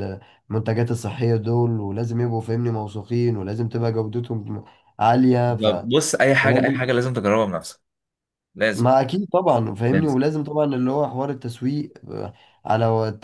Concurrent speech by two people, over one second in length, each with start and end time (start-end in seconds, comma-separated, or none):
none